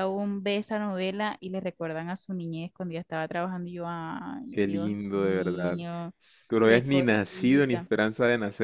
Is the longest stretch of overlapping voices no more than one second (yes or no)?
no